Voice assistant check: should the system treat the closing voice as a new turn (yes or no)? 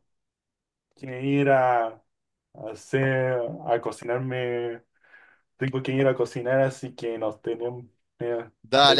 yes